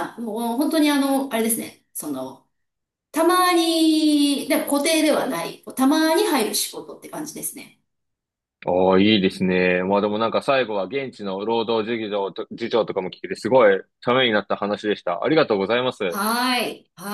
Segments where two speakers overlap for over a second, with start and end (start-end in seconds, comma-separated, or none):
none